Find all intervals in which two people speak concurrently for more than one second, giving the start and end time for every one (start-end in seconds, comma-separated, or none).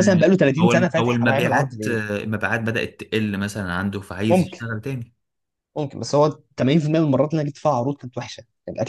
0.6-2.0